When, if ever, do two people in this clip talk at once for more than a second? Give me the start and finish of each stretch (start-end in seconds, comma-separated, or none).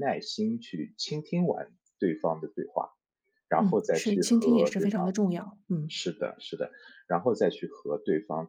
3.6-5.2